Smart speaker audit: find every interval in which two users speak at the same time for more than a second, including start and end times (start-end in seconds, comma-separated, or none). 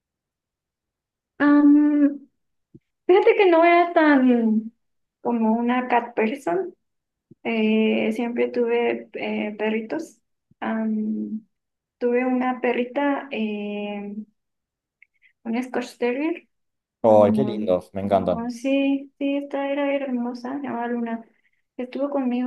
17.0-18.5